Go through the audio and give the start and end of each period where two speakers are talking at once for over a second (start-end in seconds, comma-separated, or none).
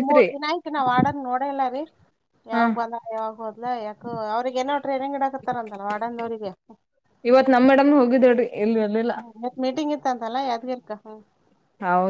none